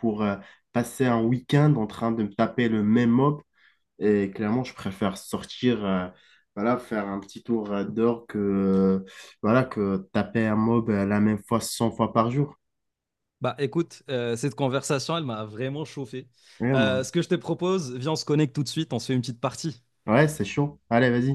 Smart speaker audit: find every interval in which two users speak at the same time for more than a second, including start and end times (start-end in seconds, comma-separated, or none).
none